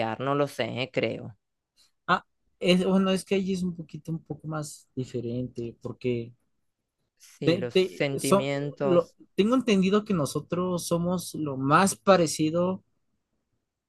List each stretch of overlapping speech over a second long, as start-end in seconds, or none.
7.4-9.2